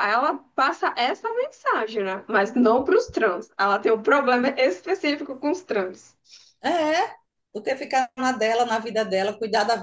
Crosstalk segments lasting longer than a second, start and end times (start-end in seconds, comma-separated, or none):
none